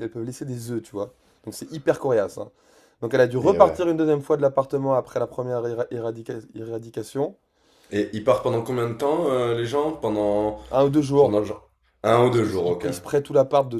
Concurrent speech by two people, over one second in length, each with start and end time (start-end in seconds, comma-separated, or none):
none